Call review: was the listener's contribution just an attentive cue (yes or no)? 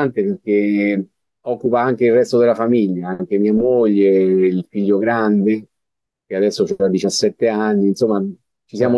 yes